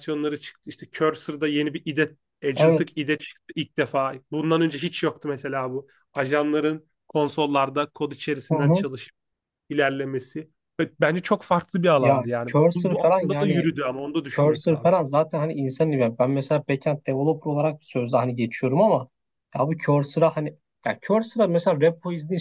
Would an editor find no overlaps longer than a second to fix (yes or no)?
no